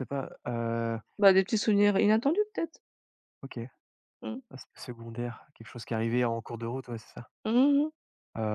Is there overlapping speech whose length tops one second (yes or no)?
no